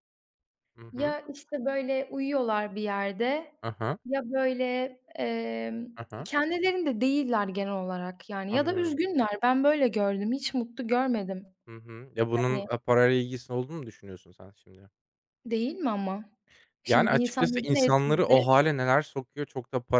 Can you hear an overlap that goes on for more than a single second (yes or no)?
yes